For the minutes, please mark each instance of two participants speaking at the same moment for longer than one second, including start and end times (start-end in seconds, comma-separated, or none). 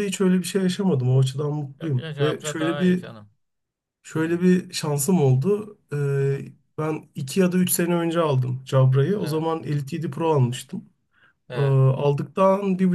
1.8-3.1